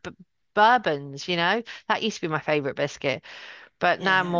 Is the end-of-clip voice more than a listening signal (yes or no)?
yes